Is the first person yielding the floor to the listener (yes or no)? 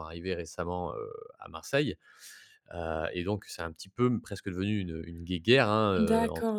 yes